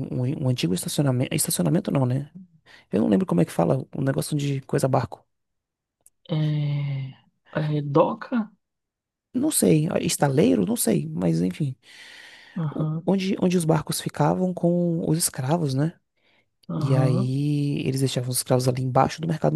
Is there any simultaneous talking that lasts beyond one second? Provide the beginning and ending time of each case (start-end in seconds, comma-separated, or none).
none